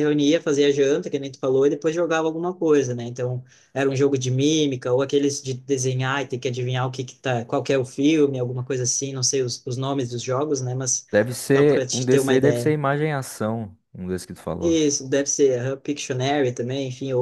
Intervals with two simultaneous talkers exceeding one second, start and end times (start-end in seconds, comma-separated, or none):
11.6-12.8